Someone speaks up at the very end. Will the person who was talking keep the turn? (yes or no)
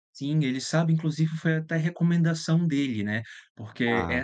yes